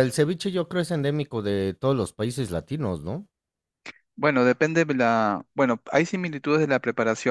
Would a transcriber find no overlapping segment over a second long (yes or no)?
yes